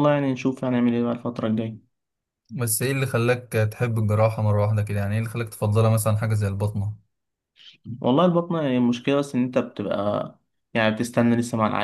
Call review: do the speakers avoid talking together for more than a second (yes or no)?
yes